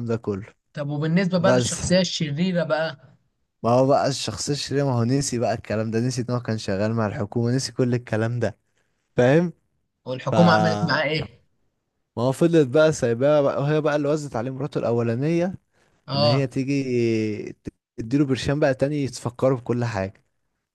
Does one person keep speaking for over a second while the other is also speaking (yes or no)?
no